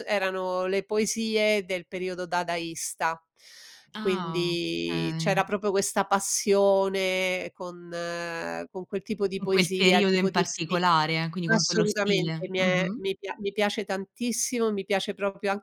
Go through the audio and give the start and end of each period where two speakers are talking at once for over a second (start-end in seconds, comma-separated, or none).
4.0-5.5, 9.4-10.8, 11.5-13.0